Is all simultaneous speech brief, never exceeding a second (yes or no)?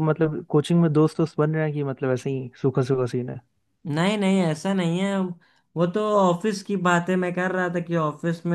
yes